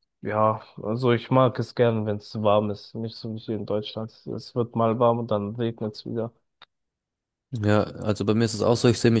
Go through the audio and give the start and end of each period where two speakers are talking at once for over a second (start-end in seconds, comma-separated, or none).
none